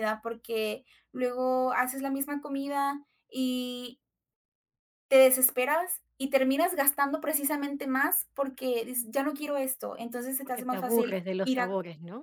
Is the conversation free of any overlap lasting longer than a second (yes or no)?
no